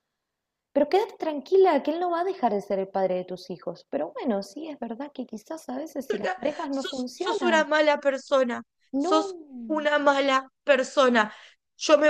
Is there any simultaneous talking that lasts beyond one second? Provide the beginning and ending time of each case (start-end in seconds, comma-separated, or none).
6.1-7.7